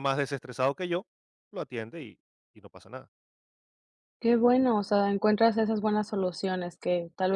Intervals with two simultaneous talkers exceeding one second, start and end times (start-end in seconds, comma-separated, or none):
none